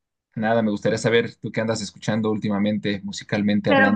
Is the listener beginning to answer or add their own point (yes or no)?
yes